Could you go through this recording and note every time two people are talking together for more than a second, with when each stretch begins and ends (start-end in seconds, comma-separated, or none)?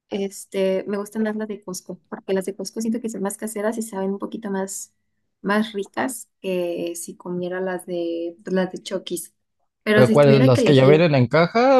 9.9-11.1